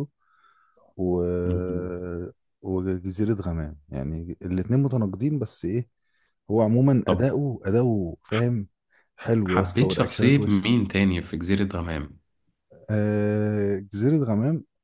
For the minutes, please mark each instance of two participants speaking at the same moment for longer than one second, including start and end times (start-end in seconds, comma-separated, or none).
9.5-10.7